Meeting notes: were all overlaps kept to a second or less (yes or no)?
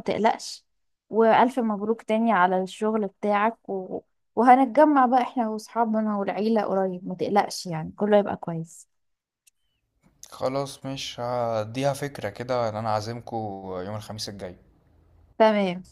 yes